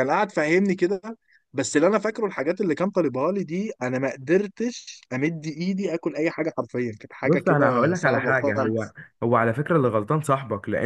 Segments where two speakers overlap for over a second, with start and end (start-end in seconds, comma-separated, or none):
7.2-9.0